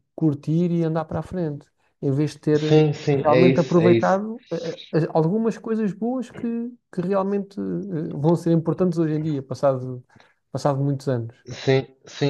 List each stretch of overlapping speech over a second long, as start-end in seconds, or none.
2.6-4.2